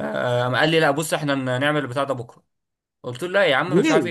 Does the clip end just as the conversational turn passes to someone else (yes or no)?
no